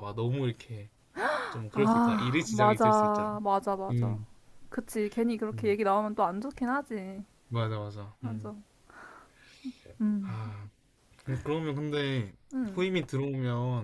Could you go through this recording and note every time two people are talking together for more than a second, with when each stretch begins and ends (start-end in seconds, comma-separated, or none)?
1.7-3.3